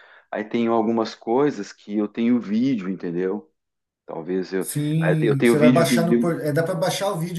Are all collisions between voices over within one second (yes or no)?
no